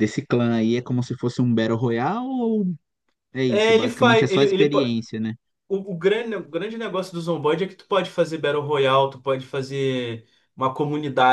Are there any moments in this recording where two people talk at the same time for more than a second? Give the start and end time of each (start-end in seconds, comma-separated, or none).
3.5-4.7